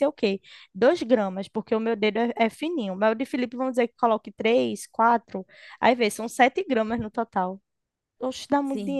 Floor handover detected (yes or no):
yes